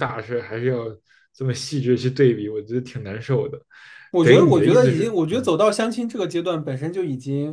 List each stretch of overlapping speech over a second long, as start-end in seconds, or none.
4.2-5.5